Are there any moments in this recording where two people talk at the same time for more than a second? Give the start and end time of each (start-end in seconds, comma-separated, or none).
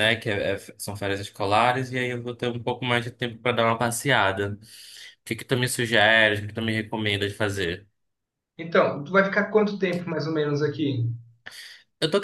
none